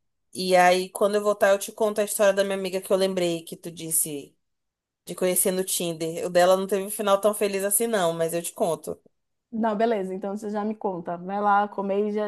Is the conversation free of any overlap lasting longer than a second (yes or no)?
yes